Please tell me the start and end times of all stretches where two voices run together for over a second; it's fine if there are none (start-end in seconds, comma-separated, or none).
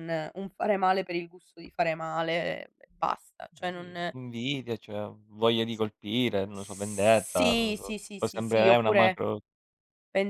6.5-9.2